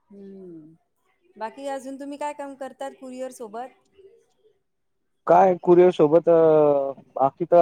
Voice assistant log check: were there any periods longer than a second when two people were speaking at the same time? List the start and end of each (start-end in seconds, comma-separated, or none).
none